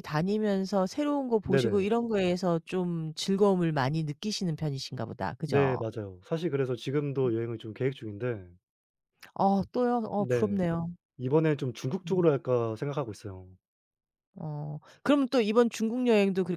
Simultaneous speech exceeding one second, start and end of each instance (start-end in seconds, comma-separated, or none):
none